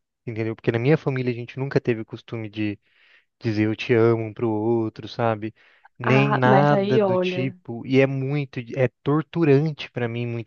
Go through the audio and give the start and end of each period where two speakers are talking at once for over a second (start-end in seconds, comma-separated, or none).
6.0-7.6